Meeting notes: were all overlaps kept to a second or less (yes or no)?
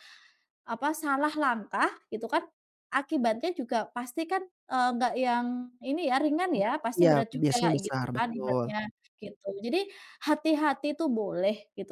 no